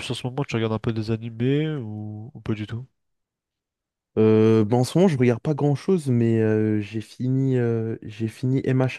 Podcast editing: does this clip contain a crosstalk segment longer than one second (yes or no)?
no